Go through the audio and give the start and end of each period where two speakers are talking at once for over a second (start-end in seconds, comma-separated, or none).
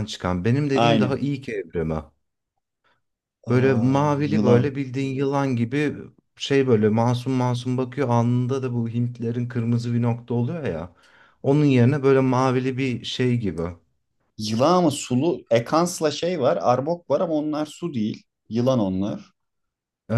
3.5-4.7